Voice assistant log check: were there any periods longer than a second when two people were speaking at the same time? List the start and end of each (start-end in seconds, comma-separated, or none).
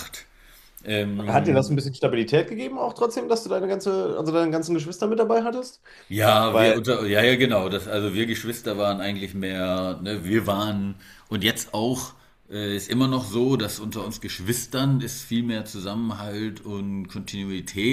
none